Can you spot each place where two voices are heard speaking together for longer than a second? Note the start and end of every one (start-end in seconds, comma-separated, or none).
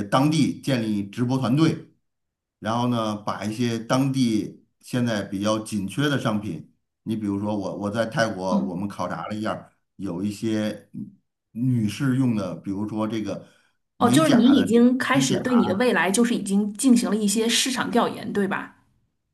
14.0-15.4